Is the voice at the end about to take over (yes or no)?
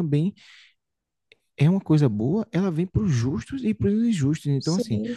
no